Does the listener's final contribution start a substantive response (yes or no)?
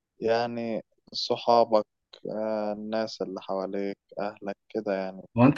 yes